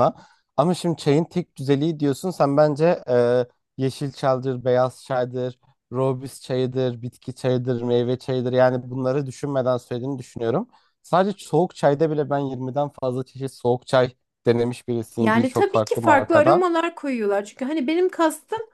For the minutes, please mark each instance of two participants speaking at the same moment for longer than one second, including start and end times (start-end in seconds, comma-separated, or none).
15.2-16.6